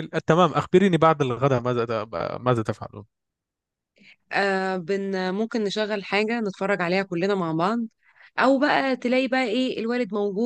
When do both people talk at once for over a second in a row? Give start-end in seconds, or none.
none